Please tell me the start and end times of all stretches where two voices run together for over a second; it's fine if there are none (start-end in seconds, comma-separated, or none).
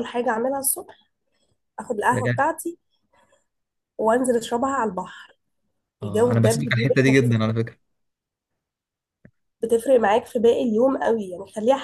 6.0-7.4